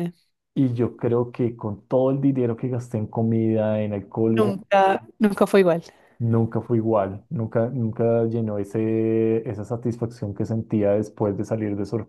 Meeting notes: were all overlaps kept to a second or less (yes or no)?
yes